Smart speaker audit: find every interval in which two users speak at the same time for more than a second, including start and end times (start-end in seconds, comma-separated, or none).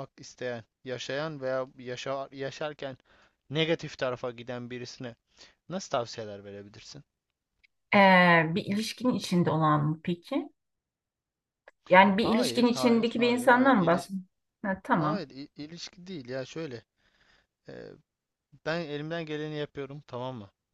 12.2-14.1